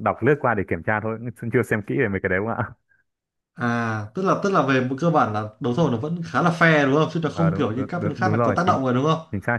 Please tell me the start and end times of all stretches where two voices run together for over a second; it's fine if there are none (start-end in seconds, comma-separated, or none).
7.3-8.8